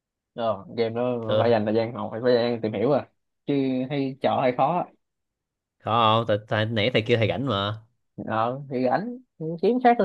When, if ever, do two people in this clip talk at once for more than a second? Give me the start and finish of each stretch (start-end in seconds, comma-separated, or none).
none